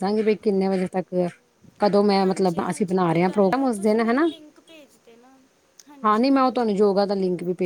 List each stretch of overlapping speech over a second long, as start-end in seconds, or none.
2.2-4.3